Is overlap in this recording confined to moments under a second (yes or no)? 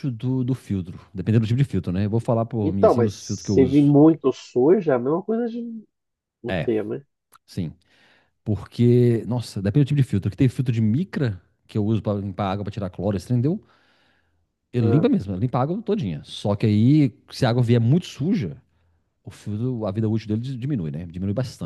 no